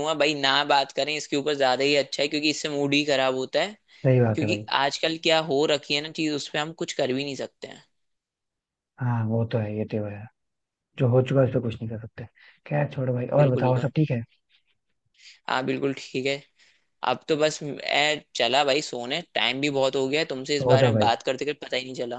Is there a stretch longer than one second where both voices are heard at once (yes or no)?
no